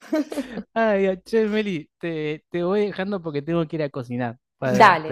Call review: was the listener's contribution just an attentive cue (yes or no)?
yes